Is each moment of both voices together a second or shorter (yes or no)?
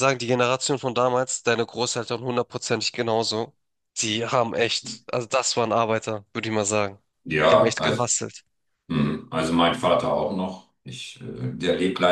yes